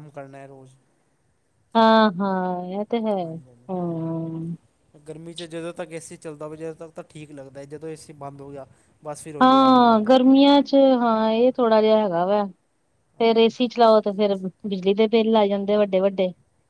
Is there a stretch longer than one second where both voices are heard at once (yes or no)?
no